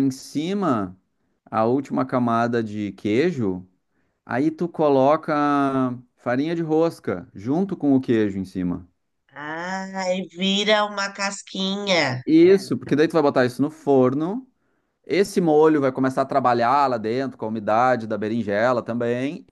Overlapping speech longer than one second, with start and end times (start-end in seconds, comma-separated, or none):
none